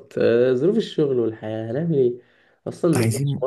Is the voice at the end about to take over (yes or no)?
no